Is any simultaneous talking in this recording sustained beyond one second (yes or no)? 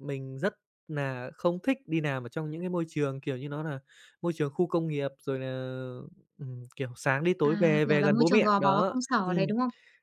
yes